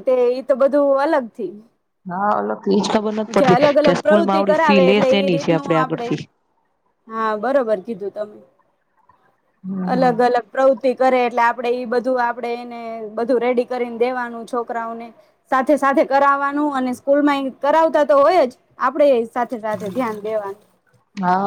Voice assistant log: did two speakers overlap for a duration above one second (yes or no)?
yes